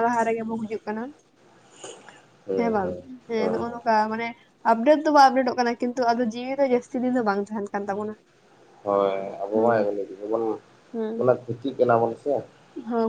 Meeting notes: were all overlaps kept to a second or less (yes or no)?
yes